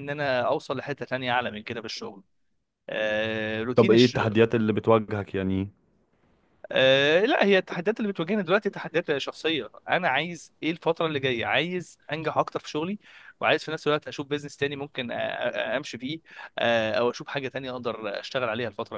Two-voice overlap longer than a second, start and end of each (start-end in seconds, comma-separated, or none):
none